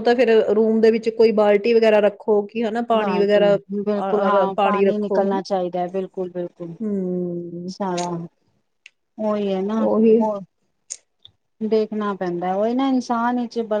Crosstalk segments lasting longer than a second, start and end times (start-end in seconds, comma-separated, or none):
none